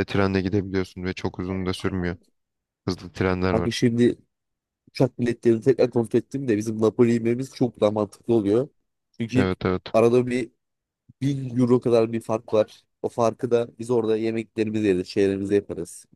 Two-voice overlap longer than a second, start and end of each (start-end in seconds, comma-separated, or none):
none